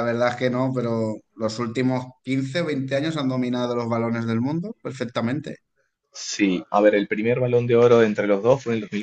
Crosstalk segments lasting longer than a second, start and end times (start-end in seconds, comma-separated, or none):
none